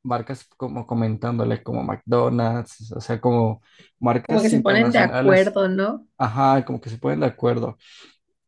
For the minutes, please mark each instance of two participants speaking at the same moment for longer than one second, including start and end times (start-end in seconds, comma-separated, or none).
4.3-5.6